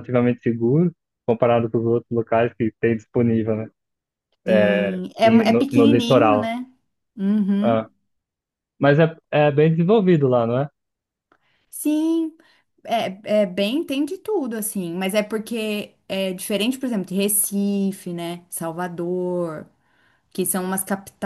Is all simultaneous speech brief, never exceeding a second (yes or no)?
no